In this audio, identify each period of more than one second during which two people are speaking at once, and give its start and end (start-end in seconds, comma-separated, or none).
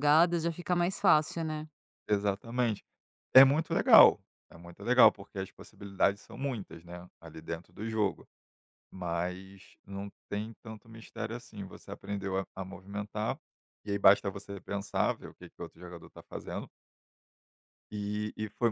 none